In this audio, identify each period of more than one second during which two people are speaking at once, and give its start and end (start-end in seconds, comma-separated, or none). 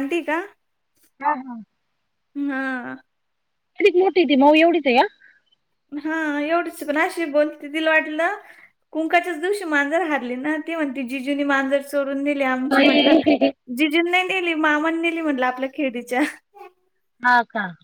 none